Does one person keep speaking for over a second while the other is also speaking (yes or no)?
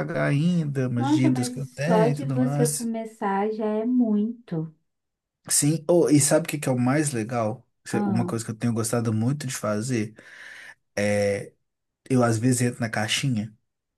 yes